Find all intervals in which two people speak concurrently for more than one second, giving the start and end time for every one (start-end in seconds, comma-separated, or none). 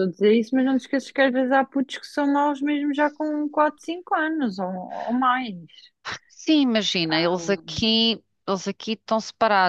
none